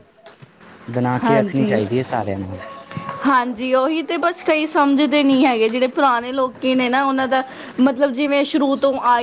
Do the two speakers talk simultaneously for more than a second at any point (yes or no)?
no